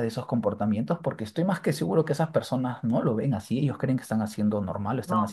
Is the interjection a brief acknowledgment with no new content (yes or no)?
yes